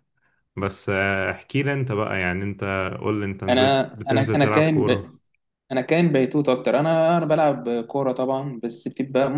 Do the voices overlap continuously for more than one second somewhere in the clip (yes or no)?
yes